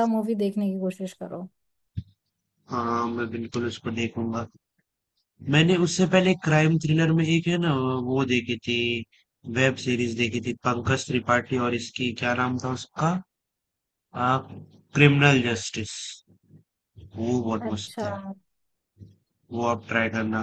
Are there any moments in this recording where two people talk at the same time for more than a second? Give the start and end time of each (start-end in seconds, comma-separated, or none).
none